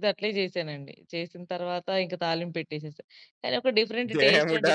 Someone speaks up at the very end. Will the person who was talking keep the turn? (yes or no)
no